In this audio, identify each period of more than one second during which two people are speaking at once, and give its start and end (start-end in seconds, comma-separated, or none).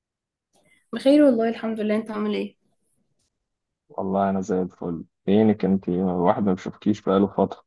none